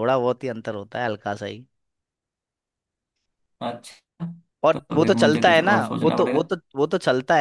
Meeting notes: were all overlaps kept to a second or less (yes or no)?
no